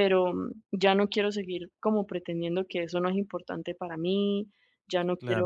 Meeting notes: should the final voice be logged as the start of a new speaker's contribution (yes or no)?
no